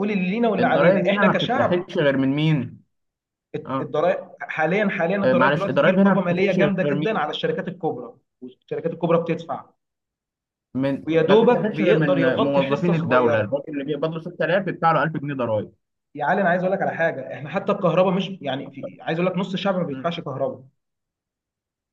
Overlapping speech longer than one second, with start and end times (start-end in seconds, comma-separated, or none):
0.6-1.9, 5.2-7.4, 11.1-13.6